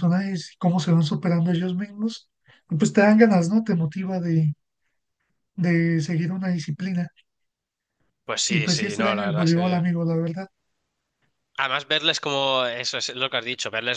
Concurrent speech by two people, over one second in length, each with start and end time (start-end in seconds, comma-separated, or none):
8.5-9.9